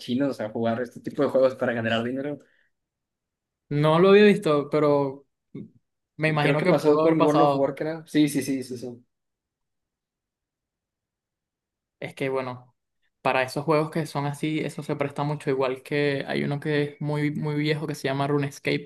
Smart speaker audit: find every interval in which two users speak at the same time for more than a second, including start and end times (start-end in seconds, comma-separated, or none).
6.4-7.7